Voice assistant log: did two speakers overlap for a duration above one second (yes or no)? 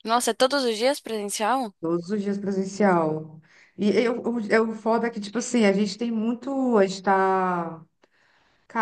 no